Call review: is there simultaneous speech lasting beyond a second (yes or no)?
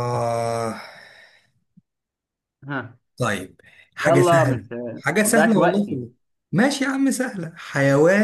yes